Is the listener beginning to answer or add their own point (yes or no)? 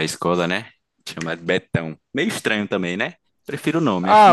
yes